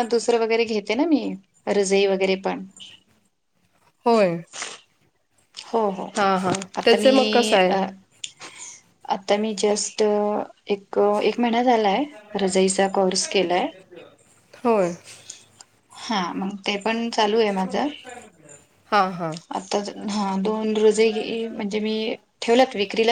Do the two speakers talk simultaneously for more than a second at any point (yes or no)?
no